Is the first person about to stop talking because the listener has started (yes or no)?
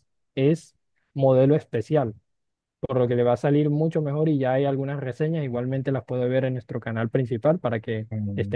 yes